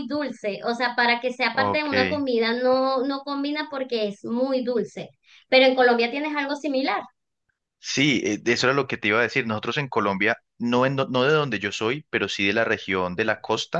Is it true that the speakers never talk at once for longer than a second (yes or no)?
yes